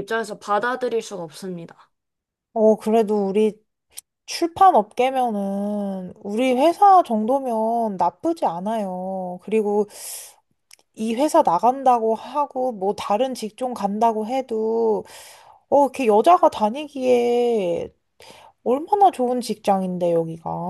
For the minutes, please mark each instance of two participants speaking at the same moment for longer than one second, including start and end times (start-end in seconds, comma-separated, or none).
none